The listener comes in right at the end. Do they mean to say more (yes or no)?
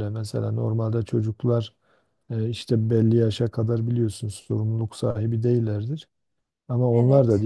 no